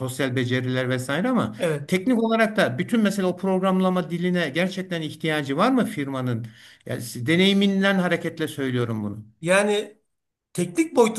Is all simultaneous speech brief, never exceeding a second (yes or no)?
yes